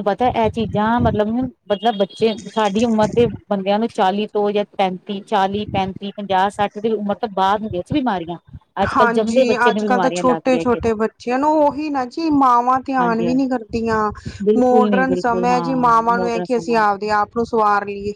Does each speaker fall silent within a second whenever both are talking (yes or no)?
no